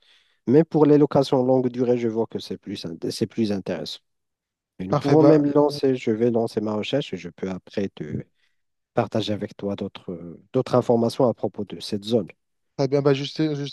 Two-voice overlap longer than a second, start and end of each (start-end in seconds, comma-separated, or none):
none